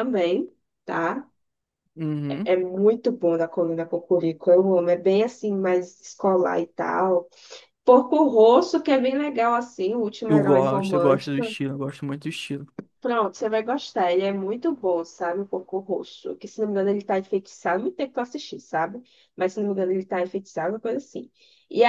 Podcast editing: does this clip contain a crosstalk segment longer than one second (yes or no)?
yes